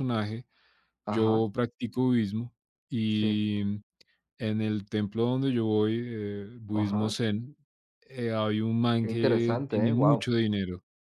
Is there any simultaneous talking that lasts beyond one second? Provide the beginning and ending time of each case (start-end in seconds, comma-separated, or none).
9.0-10.3